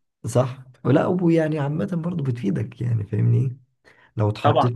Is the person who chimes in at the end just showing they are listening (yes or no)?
yes